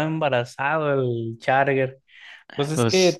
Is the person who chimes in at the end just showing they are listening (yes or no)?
yes